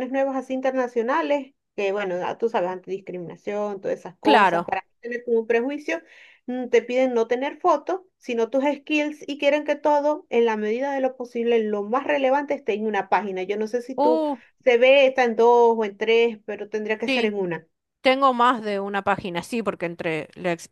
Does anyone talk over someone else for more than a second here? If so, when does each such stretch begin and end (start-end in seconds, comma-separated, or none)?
none